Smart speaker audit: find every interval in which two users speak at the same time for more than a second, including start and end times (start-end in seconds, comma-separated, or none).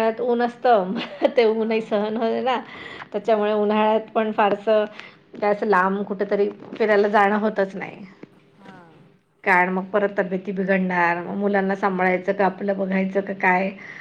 none